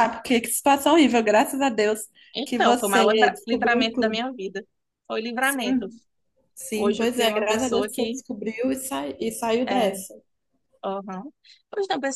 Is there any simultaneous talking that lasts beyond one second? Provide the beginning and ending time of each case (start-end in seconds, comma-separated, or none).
2.4-4.2, 6.7-8.2